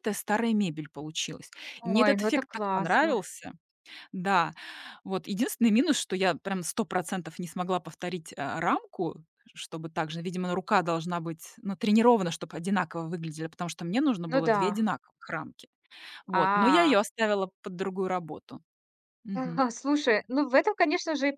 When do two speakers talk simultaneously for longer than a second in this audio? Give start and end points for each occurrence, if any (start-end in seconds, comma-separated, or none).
1.8-3.1